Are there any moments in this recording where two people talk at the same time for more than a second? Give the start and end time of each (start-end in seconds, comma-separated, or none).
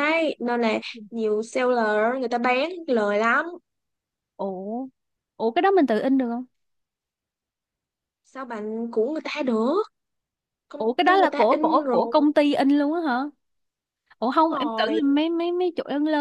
10.8-12.2